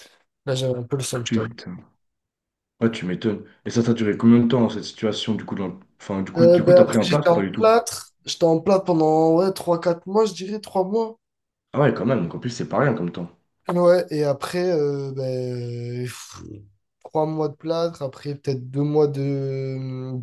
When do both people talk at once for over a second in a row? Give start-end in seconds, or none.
6.4-7.7